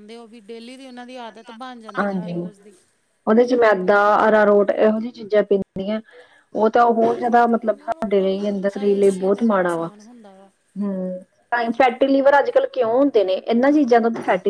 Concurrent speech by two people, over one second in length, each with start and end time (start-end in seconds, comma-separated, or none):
7.0-10.5